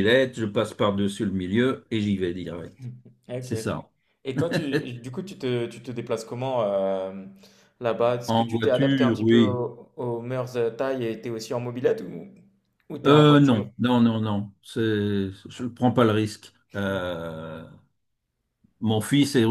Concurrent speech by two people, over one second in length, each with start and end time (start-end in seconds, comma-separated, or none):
8.3-9.6